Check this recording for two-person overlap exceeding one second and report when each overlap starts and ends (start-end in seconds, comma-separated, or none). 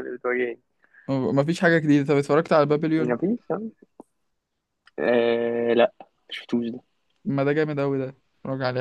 none